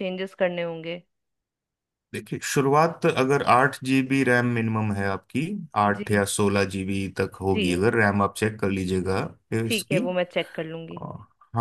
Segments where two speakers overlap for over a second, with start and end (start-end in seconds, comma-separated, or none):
none